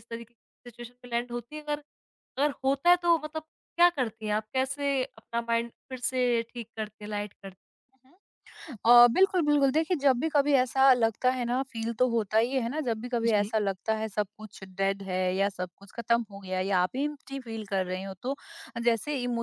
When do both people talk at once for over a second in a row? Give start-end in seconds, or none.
none